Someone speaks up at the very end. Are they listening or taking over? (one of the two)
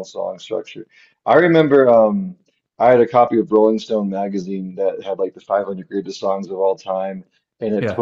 listening